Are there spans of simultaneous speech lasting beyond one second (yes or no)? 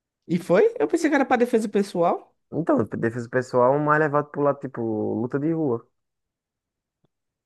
no